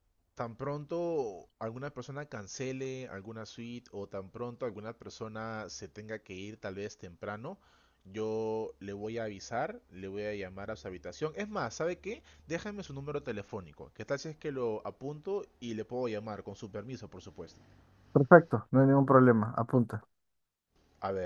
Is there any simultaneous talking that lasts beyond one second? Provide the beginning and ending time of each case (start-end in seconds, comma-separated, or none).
none